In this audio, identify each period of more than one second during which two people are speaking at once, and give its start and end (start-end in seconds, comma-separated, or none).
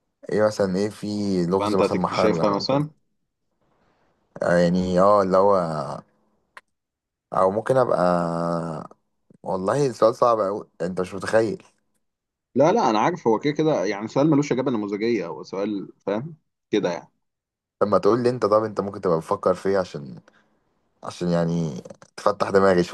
1.6-2.8